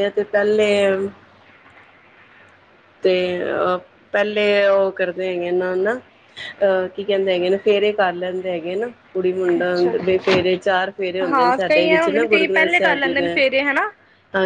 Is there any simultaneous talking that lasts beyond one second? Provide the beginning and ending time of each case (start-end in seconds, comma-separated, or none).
11.3-13.3